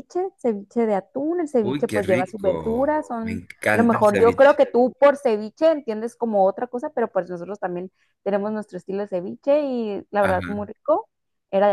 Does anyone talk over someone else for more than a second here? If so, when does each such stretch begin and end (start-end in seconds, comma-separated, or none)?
1.6-4.6